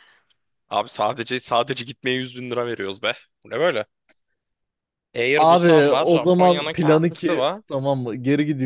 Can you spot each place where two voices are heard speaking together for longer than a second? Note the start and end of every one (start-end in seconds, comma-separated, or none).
5.3-7.6